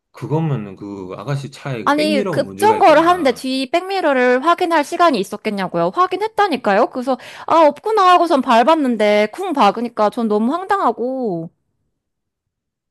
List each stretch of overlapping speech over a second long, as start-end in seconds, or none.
1.9-3.5